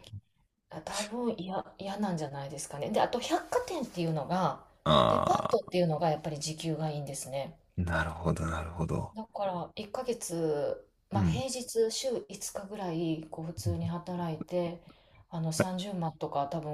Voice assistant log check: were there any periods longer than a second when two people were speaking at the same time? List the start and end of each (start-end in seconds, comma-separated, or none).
none